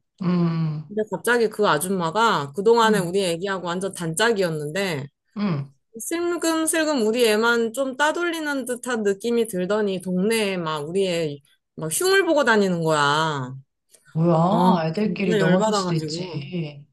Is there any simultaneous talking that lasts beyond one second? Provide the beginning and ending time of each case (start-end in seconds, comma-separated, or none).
14.5-16.4